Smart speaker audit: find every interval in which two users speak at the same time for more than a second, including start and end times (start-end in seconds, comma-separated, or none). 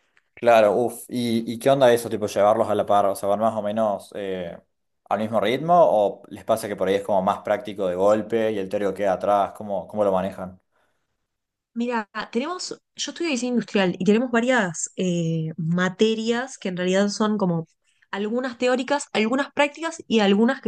none